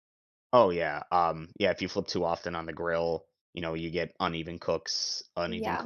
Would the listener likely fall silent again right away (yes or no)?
yes